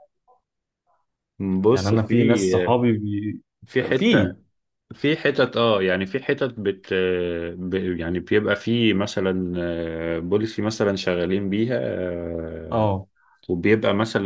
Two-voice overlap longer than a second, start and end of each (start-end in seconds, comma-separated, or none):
none